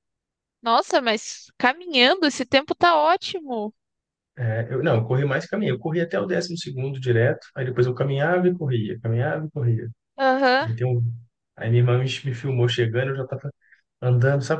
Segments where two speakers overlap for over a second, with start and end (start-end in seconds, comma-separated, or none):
none